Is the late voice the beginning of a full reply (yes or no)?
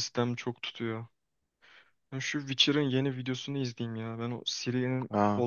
yes